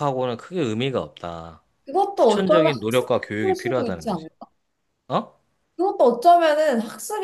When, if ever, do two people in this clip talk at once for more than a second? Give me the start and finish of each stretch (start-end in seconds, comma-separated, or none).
2.2-4.3